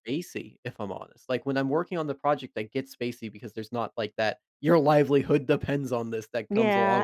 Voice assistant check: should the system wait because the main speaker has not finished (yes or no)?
no